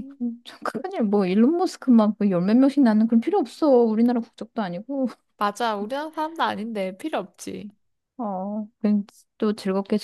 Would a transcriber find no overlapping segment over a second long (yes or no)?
yes